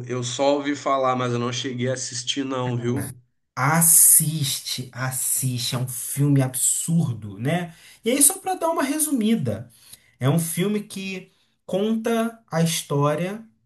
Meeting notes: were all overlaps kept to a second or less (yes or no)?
yes